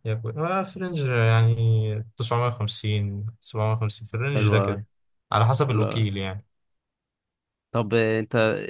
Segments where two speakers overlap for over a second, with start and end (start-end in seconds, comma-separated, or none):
none